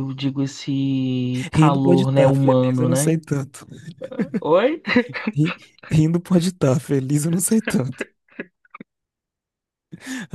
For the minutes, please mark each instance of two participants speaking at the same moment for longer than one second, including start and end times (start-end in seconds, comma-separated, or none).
1.5-3.2